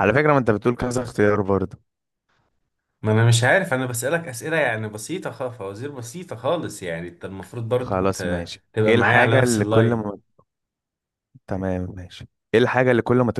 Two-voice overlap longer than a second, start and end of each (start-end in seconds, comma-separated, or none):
7.7-10.1